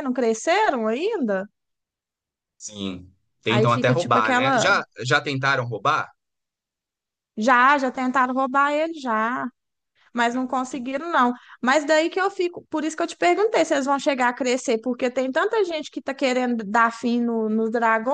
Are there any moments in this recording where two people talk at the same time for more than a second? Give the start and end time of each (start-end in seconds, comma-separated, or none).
3.5-4.7